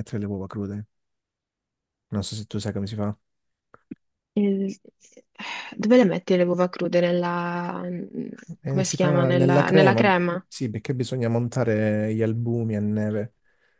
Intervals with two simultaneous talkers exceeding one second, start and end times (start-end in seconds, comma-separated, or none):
8.7-10.1